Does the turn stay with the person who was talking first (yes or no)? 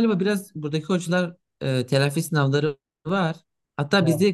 yes